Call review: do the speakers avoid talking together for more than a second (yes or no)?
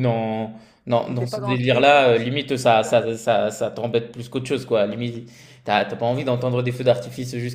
no